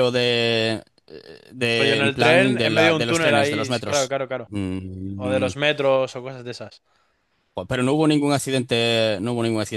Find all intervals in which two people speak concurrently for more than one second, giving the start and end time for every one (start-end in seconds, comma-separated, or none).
1.7-4.5